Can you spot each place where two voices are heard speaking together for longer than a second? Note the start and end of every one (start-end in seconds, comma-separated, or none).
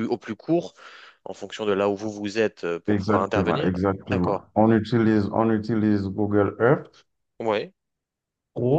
2.9-4.4